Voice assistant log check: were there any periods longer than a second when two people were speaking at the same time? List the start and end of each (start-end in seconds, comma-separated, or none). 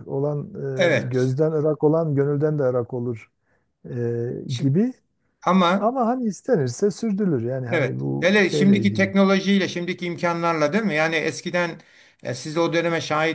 7.7-9.1